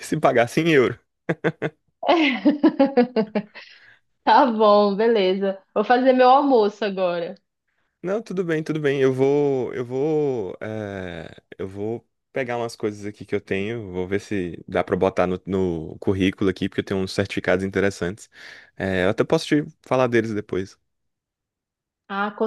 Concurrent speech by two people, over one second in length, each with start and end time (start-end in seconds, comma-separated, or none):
none